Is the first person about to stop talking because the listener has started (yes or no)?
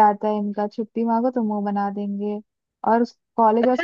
yes